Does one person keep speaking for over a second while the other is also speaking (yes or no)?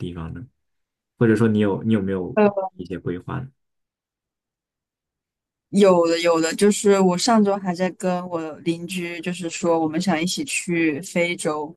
no